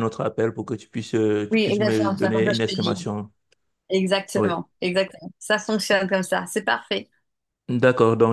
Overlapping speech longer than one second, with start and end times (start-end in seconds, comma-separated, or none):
1.5-3.1